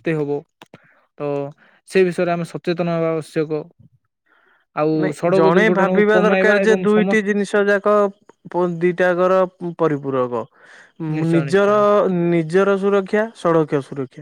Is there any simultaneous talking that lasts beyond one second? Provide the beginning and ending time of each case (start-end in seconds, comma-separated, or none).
5.0-7.3